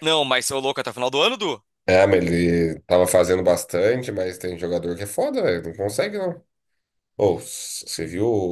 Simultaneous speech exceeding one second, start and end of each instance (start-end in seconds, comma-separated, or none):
none